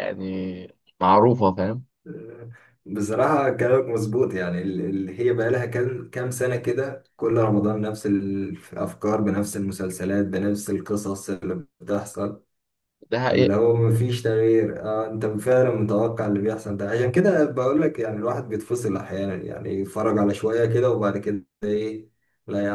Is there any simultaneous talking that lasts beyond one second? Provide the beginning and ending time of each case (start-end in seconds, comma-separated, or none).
none